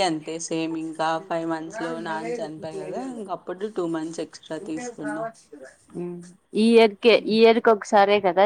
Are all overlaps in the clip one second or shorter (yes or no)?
yes